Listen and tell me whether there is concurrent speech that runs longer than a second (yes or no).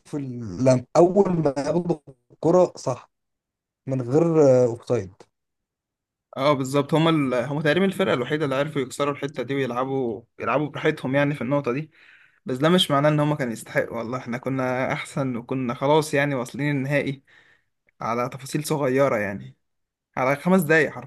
no